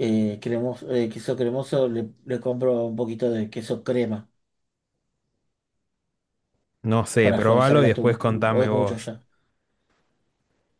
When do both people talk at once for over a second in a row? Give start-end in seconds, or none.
7.2-9.1